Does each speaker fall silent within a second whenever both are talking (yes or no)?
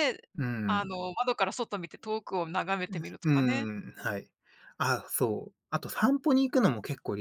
yes